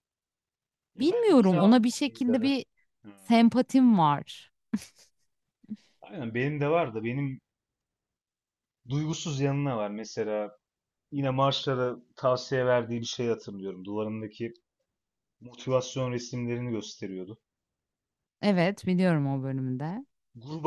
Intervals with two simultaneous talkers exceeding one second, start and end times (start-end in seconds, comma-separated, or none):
1.0-2.6